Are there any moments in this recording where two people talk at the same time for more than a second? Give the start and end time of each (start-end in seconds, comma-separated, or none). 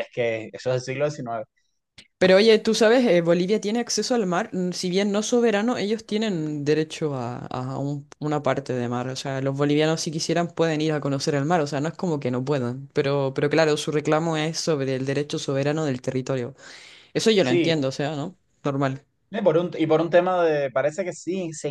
none